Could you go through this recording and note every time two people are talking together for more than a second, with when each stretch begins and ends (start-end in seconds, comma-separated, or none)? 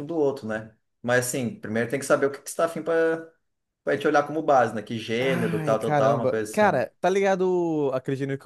5.2-6.8